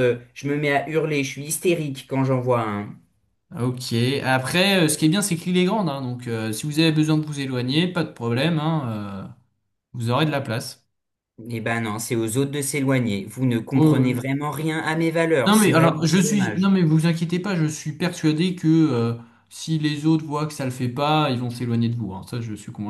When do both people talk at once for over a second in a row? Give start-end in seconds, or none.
15.5-16.7